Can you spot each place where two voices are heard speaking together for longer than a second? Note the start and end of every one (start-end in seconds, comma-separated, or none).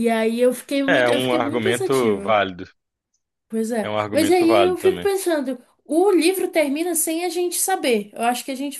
0.9-2.3, 3.8-5.1